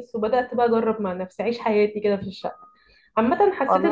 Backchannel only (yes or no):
yes